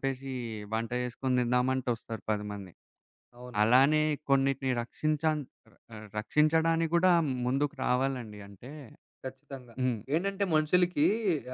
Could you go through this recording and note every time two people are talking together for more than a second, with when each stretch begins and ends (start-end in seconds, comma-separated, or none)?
none